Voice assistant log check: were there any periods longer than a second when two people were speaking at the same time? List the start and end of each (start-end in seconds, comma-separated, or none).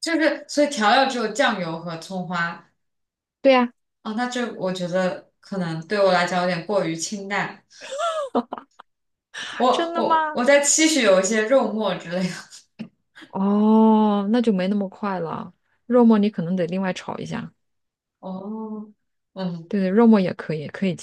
none